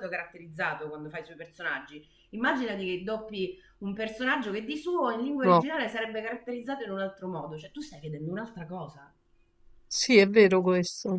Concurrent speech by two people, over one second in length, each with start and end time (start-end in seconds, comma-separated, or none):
none